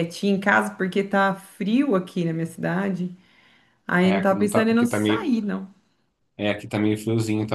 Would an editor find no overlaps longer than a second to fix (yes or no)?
no